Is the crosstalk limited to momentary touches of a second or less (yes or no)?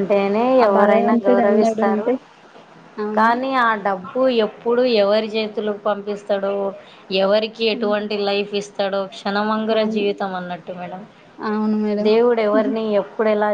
no